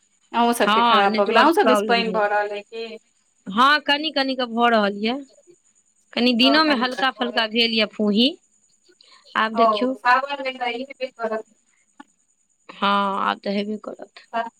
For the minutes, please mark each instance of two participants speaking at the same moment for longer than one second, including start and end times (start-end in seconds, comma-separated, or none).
0.7-2.2